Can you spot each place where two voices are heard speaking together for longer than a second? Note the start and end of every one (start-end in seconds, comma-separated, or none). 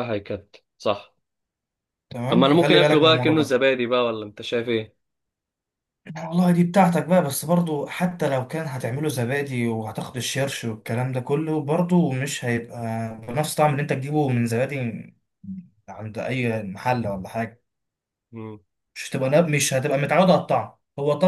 2.3-3.6